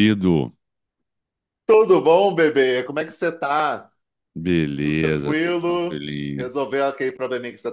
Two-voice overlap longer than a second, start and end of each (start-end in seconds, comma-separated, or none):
4.8-6.5